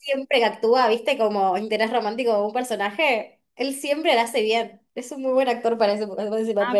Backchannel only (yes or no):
no